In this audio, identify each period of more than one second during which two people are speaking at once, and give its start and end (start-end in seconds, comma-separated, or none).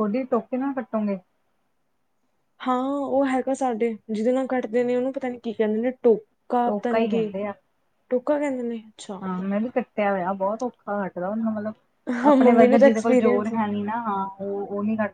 12.3-13.5